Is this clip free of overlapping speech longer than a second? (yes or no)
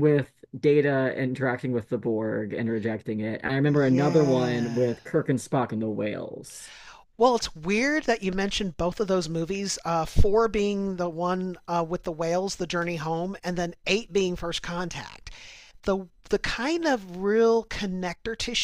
no